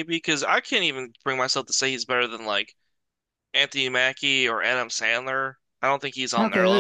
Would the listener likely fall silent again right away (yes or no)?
no